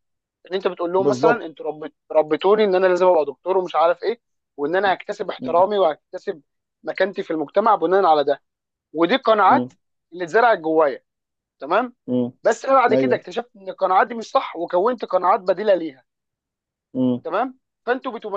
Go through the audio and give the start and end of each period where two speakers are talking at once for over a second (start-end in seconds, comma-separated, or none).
none